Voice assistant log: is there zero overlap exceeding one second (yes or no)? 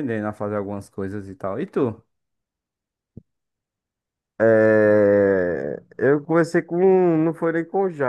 yes